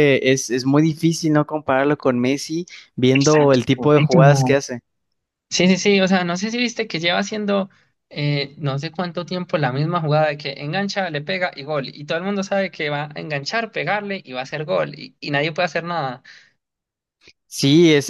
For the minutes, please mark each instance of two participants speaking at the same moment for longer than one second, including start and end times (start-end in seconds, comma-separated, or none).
3.1-4.6